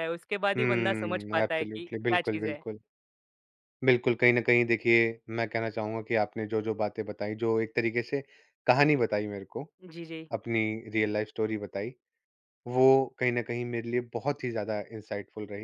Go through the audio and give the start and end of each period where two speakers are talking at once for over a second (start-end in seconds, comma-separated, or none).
0.6-2.6